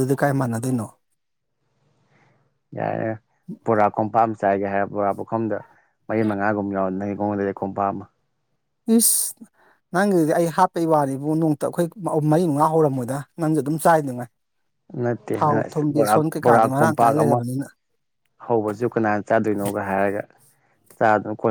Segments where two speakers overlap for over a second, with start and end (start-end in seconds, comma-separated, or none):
15.4-17.4